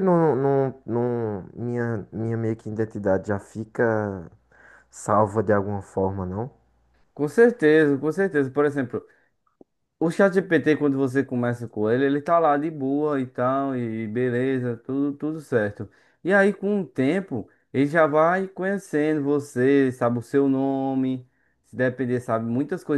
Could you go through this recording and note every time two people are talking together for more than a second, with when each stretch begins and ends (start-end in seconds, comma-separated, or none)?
none